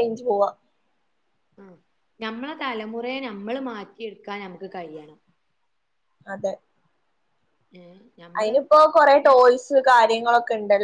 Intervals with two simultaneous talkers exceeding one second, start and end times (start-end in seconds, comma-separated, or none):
none